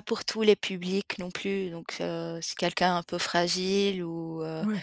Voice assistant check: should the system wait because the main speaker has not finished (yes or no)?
yes